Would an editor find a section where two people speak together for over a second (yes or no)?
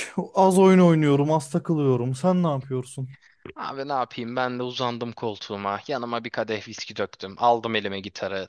no